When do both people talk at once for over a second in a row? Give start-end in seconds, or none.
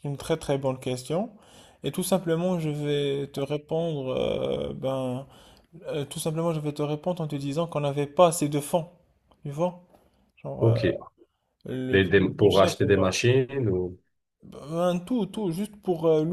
11.9-13.2